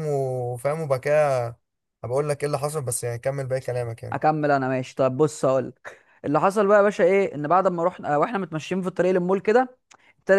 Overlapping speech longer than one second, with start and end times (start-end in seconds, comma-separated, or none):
none